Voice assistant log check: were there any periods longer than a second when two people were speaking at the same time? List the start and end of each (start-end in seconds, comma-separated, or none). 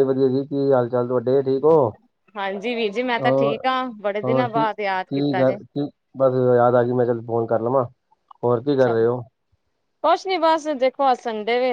3.2-5.6